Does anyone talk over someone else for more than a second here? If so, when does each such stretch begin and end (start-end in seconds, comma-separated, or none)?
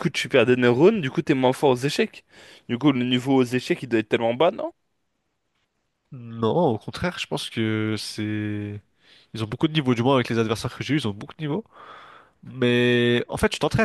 none